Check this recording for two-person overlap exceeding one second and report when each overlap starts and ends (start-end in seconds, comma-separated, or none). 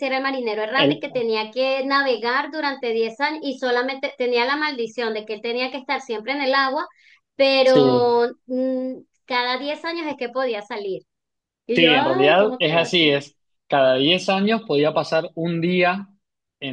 11.7-13.2